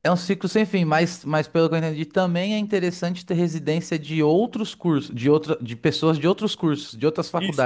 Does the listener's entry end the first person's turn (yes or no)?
yes